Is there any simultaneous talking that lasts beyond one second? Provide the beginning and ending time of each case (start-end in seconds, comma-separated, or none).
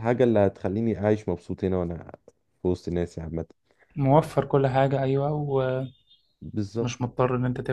none